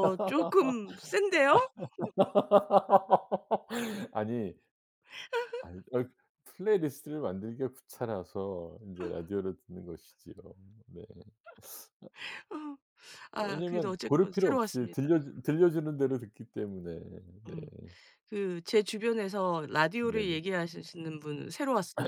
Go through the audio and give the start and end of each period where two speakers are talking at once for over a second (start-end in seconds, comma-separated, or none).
13.4-15.1